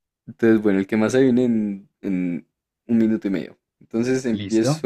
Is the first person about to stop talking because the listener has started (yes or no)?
no